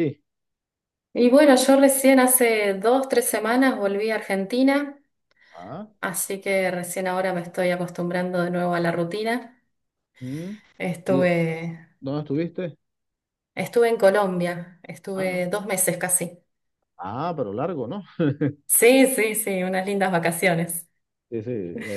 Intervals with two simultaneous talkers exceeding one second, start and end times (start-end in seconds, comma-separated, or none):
none